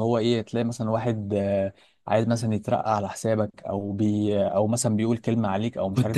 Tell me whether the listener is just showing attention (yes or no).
no